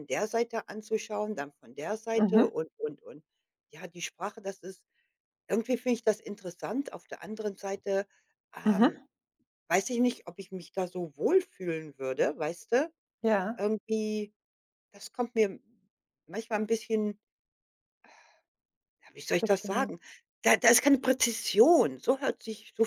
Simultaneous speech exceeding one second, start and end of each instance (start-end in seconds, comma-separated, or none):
none